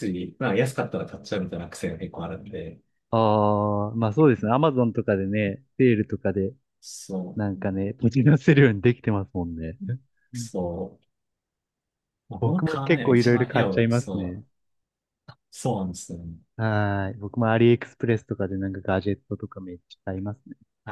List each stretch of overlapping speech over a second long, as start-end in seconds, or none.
12.4-14.4